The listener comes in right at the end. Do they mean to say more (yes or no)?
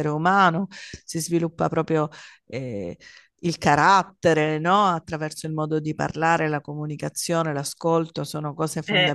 no